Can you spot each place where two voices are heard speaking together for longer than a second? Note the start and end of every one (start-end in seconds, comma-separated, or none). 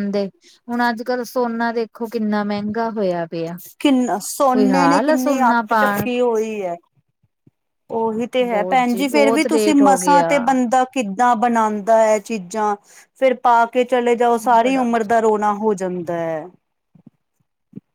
4.5-6.1, 8.5-10.4